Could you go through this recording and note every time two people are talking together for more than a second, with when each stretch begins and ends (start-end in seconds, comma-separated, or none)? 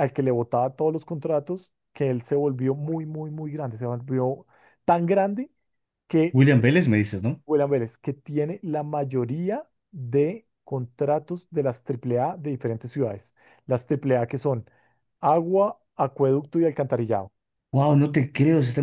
none